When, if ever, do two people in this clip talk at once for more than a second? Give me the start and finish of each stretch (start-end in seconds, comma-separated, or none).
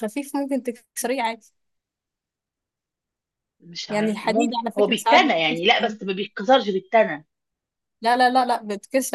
3.9-6.0